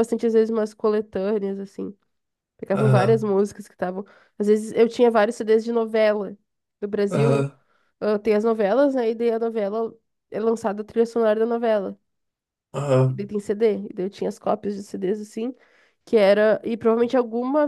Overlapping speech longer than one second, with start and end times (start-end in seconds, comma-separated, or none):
none